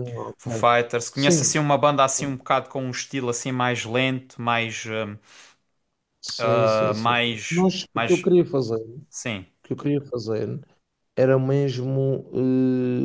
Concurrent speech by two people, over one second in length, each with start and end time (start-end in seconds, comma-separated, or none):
6.4-8.3